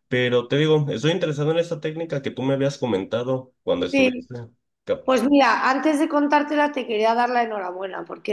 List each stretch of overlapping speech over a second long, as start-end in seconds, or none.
none